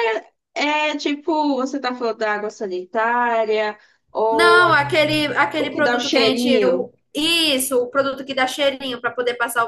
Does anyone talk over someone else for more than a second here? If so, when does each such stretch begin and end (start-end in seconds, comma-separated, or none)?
5.6-6.9